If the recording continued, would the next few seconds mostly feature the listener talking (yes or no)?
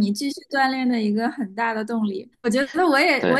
no